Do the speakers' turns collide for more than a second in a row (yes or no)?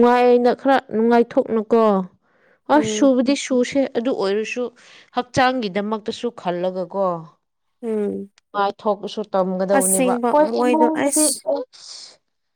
yes